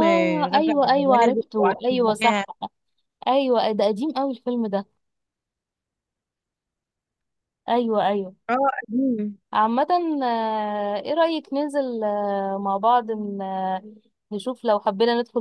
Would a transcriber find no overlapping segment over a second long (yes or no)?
no